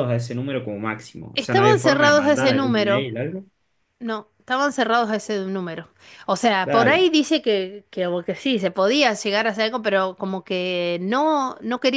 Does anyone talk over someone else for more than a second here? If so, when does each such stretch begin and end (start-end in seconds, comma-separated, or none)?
1.3-3.1